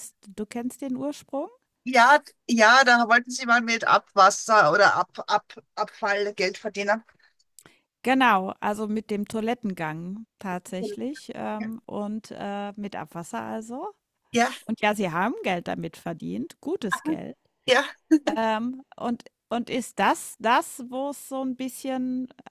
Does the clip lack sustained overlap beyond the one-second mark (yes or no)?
yes